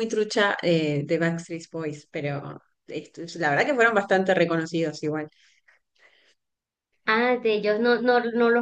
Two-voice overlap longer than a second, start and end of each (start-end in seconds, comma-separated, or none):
none